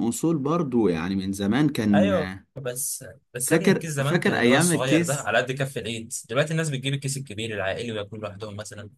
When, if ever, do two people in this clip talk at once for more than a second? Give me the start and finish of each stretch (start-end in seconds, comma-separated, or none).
3.4-5.3